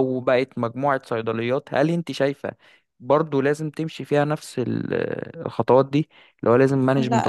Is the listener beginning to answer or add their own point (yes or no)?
yes